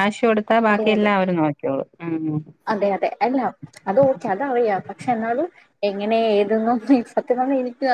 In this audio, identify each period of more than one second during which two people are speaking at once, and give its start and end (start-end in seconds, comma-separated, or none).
none